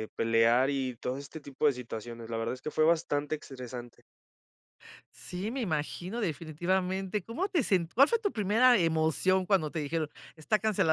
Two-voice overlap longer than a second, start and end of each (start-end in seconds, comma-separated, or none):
none